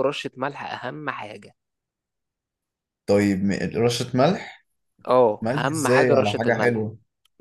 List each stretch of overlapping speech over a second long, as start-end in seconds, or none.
5.4-6.9